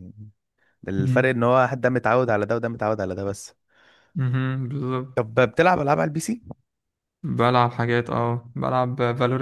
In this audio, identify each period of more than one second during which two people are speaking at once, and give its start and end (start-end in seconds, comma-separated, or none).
none